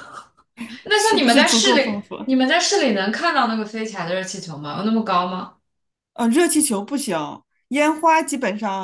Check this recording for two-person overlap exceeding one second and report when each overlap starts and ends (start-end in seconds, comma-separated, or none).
0.9-2.1